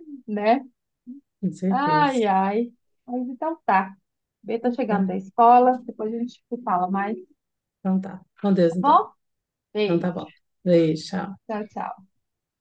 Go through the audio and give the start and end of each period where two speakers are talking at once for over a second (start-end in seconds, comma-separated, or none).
none